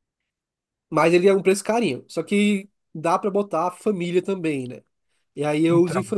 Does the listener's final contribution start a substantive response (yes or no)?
no